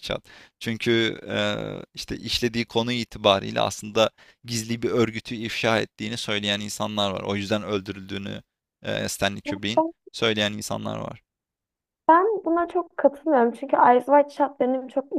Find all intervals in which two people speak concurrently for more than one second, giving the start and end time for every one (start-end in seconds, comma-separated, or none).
none